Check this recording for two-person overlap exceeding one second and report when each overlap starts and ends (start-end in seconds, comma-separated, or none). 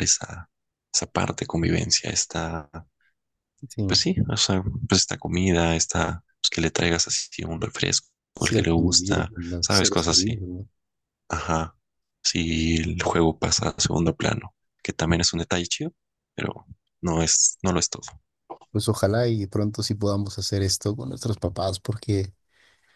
8.4-10.4